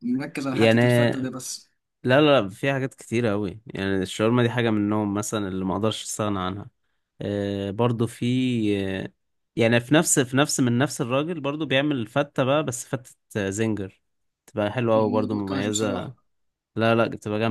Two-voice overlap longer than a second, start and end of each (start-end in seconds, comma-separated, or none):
14.9-16.1